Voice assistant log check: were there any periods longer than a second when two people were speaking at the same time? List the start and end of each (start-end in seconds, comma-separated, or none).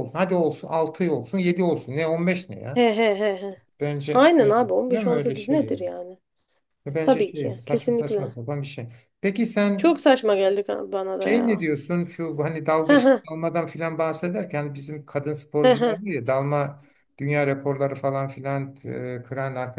4.1-5.8, 7.0-8.3